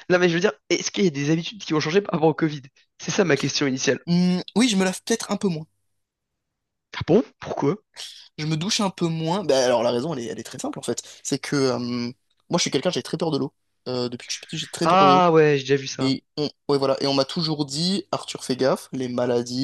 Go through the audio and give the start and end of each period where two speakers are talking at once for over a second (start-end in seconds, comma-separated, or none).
none